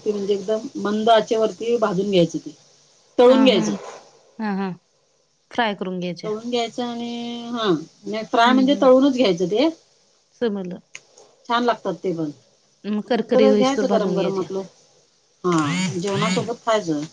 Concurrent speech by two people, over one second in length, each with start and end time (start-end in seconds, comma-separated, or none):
13.1-14.5